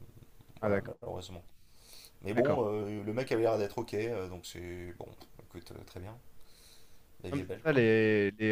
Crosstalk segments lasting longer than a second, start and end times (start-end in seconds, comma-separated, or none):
none